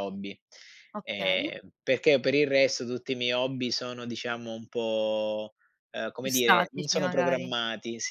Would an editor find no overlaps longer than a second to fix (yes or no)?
no